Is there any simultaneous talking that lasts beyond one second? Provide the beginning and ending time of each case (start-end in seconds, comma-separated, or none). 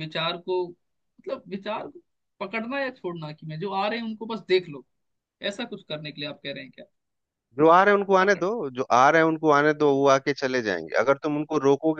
none